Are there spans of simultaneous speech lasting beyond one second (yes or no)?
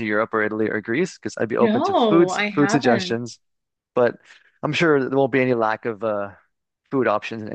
yes